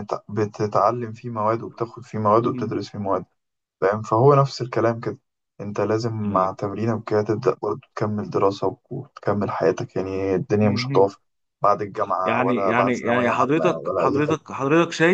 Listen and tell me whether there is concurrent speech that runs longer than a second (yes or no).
yes